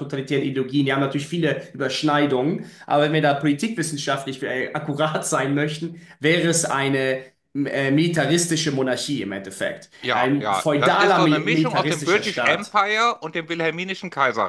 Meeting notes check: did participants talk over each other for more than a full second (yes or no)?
yes